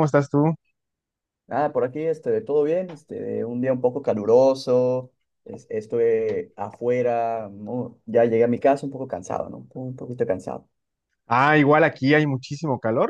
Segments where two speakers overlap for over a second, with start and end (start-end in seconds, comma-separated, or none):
none